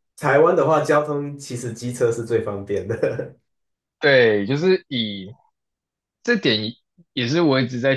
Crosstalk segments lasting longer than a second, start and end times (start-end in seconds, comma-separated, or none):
none